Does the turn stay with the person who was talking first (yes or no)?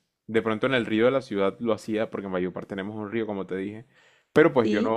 yes